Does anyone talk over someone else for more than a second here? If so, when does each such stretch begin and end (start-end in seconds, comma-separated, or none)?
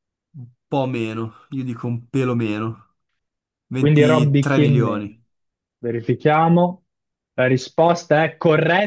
3.7-5.2